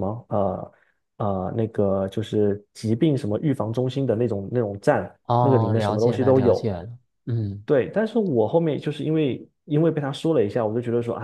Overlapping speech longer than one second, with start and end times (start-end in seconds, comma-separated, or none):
5.2-6.7